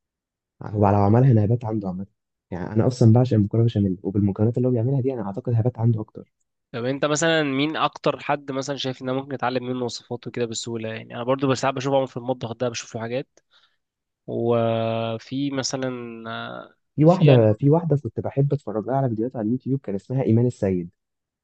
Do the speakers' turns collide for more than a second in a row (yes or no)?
no